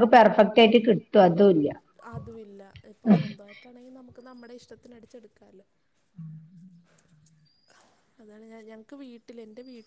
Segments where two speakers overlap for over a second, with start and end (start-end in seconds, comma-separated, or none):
none